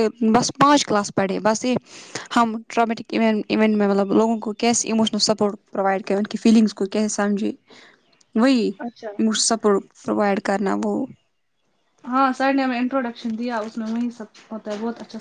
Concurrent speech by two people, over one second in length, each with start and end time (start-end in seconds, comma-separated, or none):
none